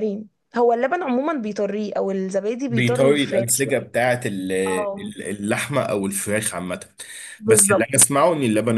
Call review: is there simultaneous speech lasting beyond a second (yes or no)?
yes